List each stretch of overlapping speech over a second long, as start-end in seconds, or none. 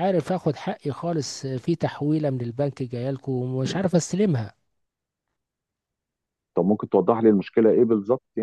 none